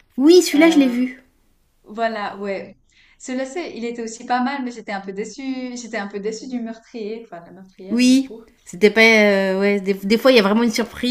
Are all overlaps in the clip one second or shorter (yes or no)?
yes